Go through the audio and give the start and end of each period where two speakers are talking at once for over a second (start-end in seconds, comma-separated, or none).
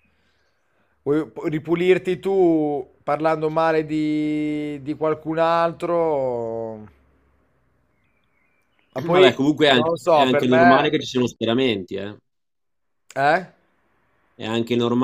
9.1-10.9